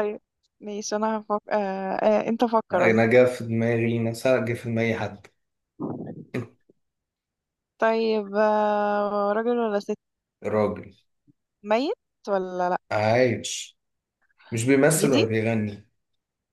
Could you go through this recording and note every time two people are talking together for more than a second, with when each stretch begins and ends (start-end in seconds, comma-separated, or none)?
none